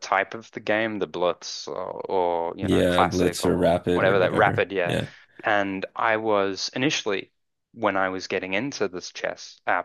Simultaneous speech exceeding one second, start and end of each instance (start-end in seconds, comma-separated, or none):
2.6-5.0